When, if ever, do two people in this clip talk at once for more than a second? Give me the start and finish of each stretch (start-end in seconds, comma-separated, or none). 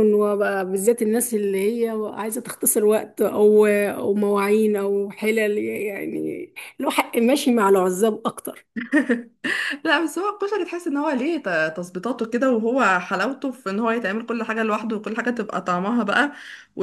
none